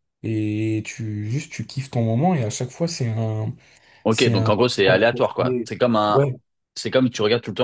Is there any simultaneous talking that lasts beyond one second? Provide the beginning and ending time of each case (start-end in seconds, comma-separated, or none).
none